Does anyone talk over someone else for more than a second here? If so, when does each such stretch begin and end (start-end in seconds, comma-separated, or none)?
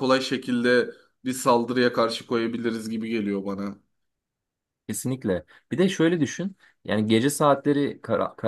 none